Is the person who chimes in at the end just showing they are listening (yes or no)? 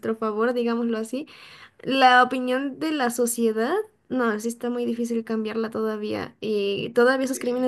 yes